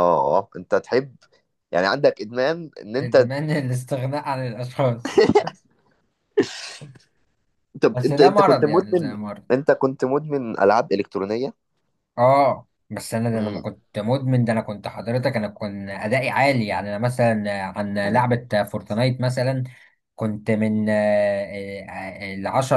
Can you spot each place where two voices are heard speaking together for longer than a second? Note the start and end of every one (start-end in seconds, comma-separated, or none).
7.9-9.4